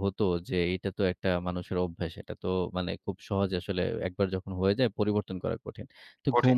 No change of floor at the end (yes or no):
yes